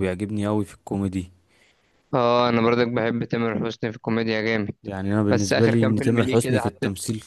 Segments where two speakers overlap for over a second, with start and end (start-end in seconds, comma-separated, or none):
5.3-6.7